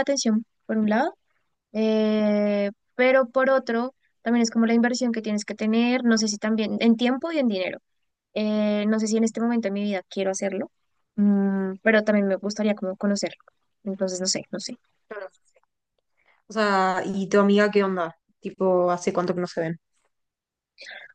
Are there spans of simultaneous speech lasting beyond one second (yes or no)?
no